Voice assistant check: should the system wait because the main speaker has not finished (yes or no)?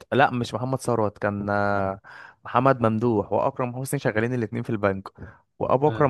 yes